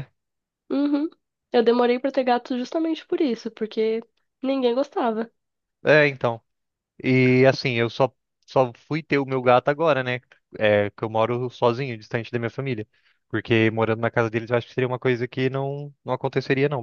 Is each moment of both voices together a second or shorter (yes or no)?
yes